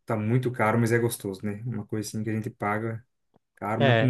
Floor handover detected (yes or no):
yes